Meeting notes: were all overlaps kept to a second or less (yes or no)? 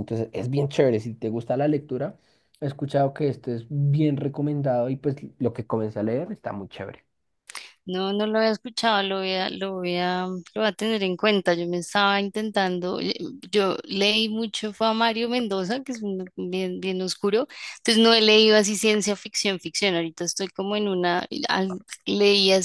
yes